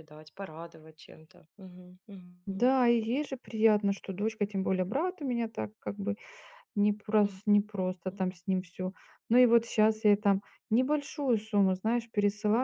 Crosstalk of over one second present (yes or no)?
no